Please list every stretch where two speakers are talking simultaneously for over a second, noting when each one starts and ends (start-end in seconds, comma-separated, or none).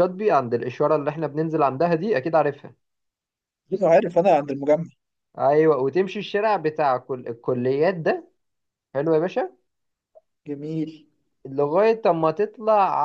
none